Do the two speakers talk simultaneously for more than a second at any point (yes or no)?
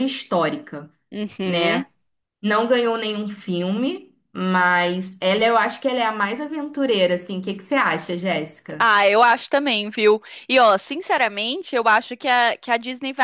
no